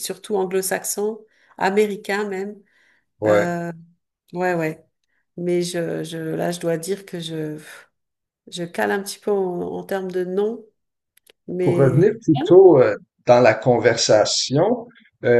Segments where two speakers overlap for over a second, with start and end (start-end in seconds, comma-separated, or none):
none